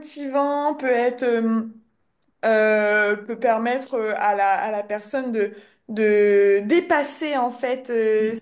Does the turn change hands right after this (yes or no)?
no